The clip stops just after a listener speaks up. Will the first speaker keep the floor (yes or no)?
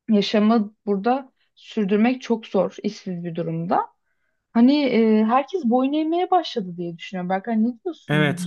no